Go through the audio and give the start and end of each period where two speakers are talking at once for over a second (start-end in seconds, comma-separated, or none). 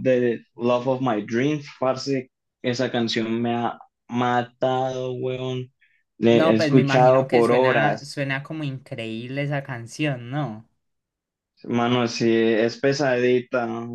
6.3-8.3